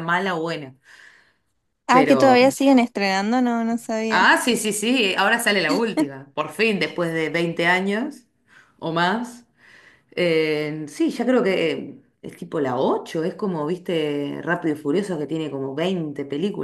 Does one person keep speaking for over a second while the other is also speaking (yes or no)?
no